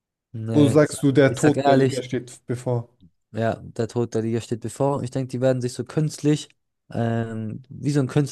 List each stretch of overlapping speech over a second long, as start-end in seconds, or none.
0.5-2.0